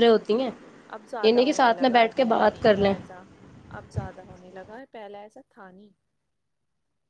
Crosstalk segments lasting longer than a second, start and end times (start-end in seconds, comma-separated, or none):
1.2-2.9